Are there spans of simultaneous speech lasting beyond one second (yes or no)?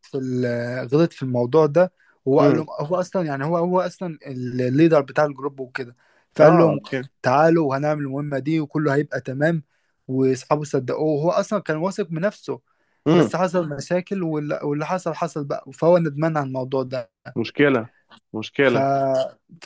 no